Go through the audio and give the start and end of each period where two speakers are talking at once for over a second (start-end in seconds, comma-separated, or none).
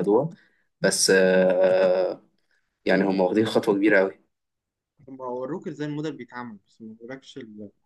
none